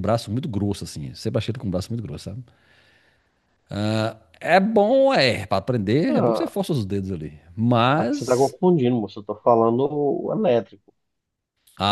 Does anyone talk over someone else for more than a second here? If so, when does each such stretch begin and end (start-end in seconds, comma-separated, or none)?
none